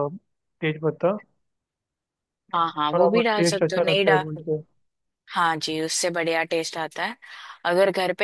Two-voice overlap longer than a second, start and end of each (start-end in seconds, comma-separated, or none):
2.6-4.4